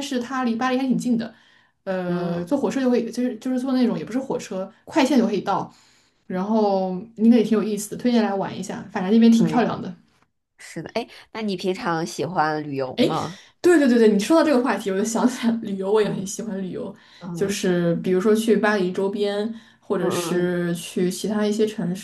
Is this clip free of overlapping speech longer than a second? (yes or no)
yes